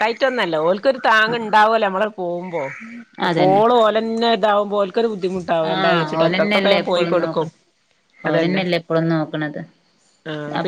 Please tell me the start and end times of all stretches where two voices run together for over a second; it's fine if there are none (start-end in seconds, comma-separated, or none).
5.7-7.5